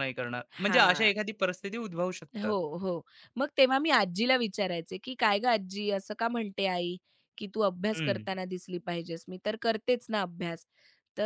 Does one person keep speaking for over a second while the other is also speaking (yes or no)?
no